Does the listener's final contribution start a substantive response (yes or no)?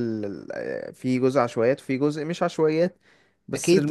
yes